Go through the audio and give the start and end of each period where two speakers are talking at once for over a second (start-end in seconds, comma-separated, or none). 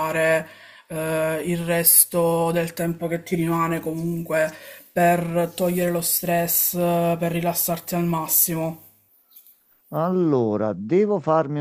none